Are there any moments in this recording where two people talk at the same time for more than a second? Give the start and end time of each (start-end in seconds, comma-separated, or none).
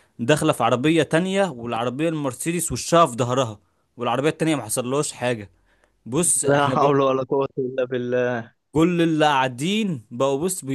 none